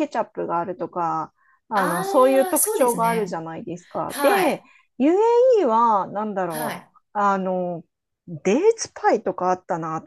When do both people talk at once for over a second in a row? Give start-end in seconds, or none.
1.7-3.4